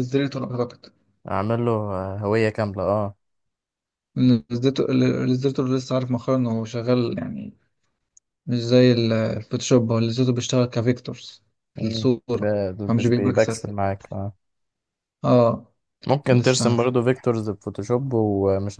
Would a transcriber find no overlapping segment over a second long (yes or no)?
no